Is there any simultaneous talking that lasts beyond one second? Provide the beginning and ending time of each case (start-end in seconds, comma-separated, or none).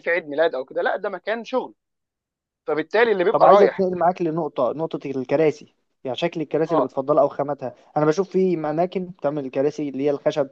none